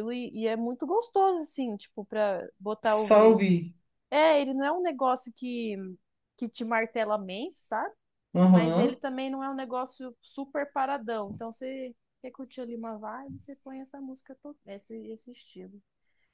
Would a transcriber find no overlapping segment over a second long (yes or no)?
yes